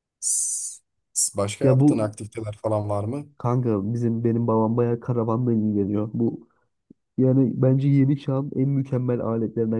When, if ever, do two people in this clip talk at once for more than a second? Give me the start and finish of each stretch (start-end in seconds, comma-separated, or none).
none